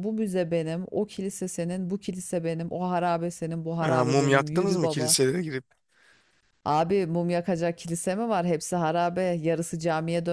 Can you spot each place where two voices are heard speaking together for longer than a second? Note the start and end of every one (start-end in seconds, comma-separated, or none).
3.9-5.2